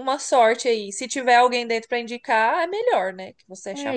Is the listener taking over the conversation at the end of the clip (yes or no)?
yes